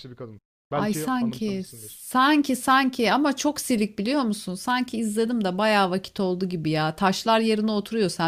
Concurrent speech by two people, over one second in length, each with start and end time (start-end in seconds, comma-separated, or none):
0.7-2.0